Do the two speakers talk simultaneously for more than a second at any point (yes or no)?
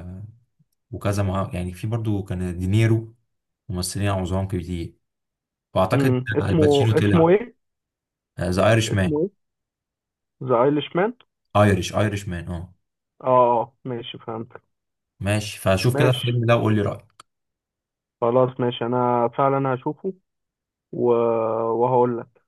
yes